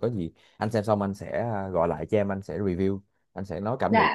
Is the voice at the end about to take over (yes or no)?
yes